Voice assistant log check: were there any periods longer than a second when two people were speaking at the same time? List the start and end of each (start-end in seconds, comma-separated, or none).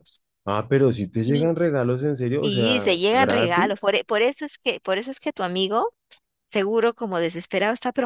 2.4-3.9